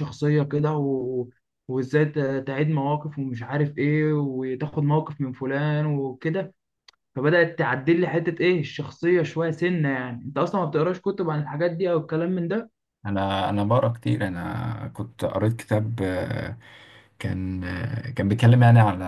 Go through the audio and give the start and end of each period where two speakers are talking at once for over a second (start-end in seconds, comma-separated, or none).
none